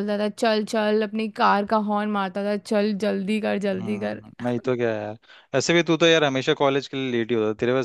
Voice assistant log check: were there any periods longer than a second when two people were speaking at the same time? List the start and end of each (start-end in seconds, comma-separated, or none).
none